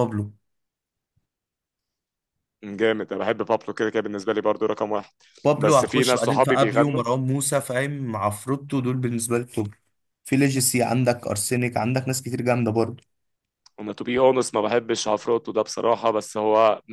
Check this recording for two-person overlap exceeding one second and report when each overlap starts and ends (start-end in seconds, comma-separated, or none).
5.6-7.0